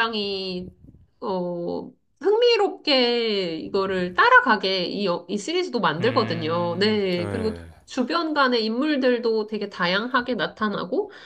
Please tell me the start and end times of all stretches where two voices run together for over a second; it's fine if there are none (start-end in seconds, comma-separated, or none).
6.0-7.7